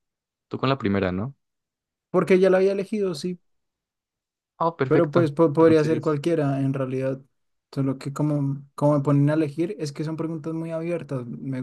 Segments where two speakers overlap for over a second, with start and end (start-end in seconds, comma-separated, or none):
4.9-6.2